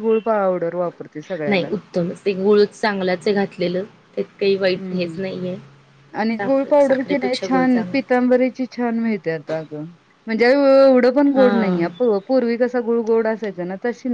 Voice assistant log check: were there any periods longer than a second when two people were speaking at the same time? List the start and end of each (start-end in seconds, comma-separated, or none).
6.4-8.1